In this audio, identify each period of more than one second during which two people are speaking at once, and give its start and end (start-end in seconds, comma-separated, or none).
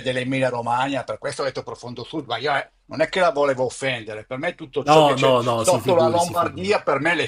4.8-6.8